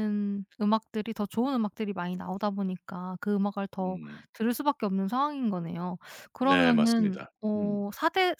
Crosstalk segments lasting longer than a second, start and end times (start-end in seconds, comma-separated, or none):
6.4-7.8